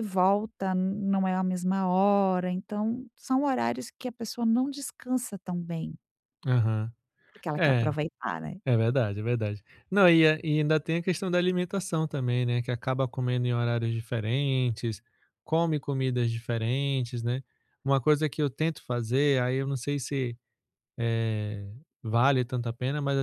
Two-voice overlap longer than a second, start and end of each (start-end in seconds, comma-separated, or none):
none